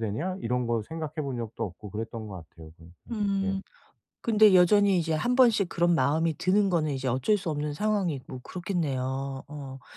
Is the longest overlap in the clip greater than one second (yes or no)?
no